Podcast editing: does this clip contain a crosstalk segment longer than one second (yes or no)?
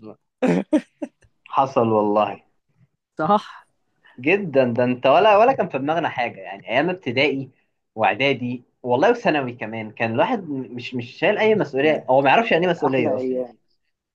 yes